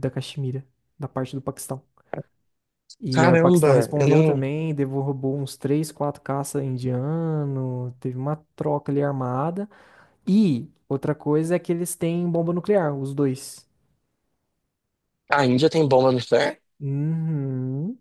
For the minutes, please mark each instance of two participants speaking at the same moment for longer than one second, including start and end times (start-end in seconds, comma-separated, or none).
3.1-4.5